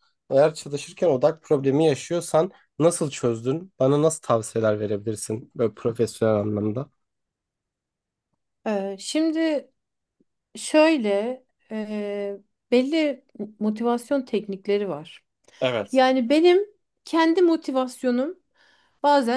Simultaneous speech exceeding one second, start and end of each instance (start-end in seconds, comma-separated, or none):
none